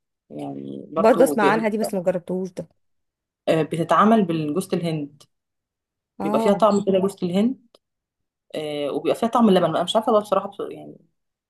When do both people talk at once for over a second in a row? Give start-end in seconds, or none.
none